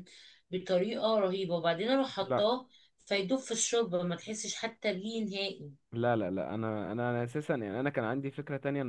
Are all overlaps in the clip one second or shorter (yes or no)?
yes